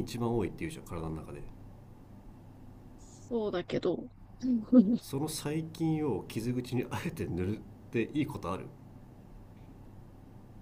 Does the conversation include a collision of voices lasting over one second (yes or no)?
no